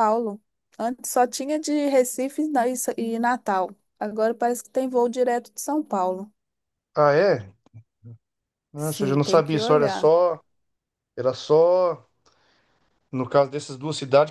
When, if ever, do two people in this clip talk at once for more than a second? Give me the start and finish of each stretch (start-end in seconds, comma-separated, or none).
8.8-10.1